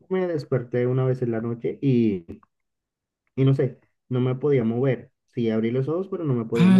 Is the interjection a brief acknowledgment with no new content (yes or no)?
no